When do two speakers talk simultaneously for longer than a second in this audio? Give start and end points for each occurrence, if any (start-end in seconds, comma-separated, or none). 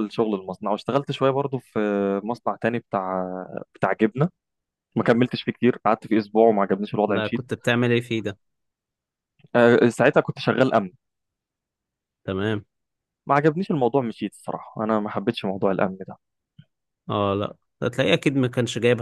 none